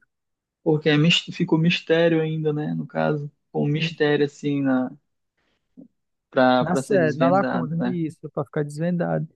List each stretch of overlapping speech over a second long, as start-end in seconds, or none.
6.6-8.0